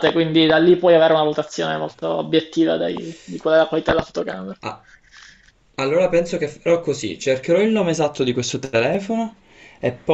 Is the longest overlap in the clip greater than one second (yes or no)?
no